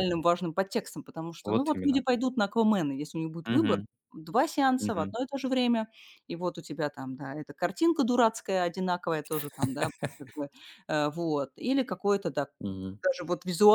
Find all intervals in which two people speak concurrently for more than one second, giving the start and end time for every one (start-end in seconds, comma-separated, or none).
none